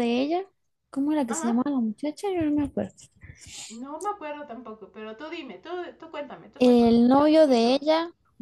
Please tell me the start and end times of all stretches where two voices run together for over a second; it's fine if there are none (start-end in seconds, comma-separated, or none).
6.6-7.8